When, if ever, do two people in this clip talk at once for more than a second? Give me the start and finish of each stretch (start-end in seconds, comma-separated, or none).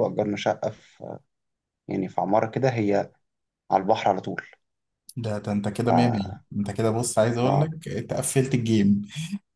none